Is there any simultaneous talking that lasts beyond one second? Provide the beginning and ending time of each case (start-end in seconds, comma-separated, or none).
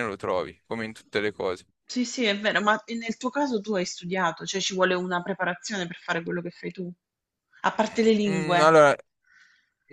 none